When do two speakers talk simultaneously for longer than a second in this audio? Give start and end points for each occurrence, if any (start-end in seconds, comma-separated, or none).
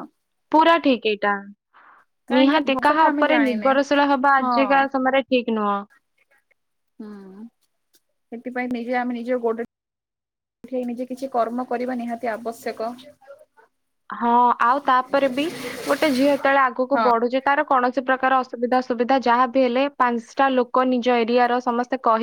2.4-3.7